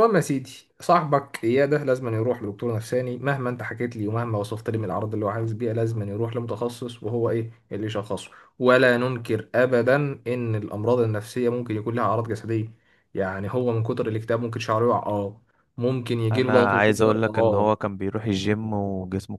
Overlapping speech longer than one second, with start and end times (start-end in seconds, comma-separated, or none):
16.3-17.7